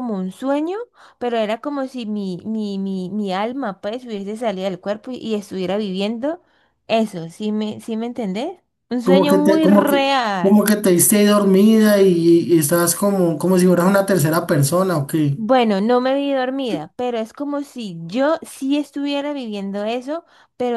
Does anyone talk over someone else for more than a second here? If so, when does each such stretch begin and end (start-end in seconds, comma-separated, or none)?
9.0-10.8